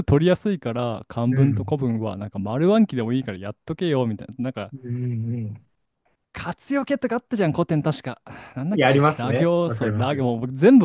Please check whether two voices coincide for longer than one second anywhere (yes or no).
yes